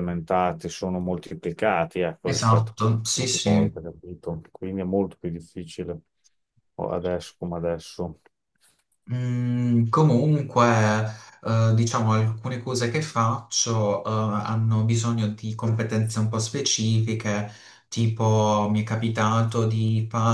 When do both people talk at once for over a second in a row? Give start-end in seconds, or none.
2.2-3.7